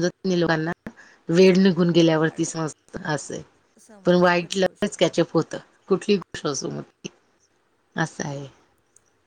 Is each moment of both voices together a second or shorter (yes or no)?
no